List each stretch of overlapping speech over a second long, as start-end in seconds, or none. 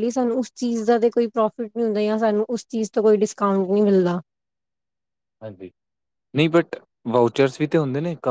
none